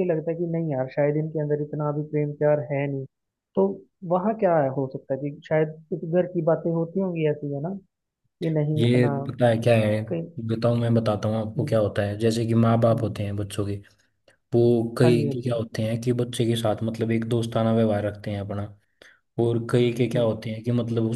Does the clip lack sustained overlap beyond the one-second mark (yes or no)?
yes